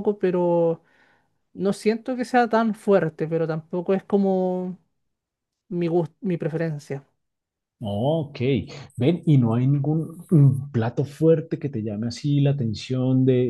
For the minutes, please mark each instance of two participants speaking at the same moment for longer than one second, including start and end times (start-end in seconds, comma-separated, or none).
none